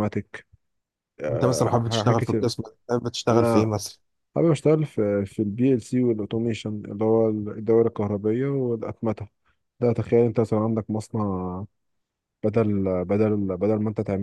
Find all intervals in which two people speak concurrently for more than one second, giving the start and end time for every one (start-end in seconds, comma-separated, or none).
1.3-2.5